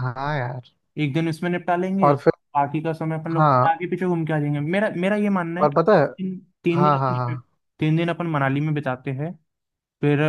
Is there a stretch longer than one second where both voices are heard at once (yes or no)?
no